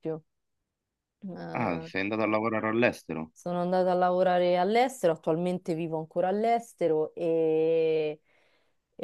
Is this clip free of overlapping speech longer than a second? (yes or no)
yes